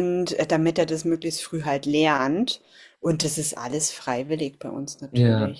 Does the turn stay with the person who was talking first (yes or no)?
no